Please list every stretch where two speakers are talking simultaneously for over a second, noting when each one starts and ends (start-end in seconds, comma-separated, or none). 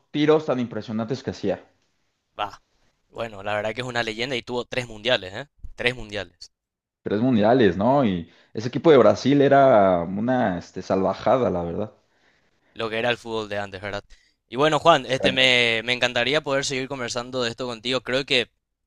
none